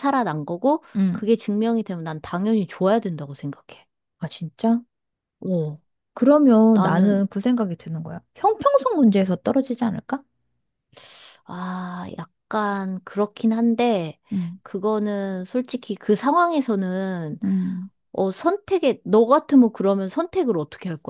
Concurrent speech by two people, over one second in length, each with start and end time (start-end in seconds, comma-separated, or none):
none